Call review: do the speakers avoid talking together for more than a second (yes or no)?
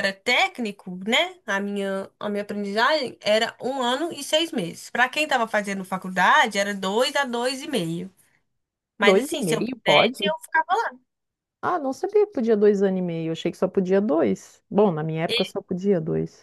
no